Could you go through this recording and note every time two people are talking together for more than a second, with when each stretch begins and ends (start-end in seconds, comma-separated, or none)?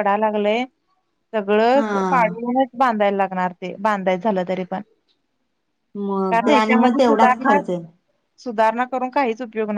6.3-7.6